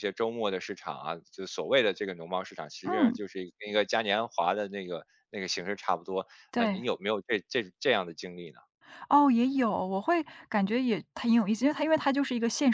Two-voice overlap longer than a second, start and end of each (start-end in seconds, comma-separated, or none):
none